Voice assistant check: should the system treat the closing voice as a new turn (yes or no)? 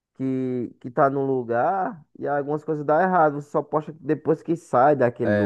yes